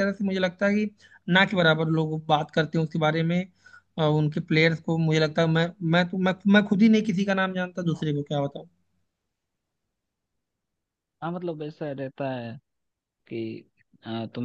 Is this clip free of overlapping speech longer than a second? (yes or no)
yes